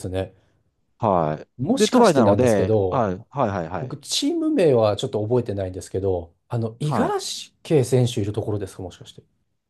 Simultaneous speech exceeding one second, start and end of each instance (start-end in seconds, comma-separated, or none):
1.6-3.1